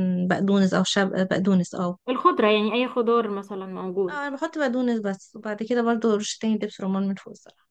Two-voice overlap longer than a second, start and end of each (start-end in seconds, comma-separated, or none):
none